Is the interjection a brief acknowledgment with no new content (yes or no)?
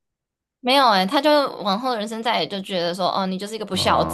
no